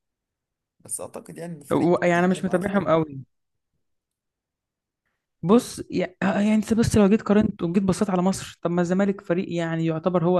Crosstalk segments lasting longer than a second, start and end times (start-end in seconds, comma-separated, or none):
1.7-2.9